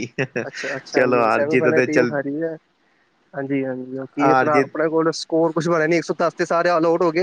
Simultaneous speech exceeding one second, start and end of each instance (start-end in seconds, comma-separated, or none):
0.9-2.2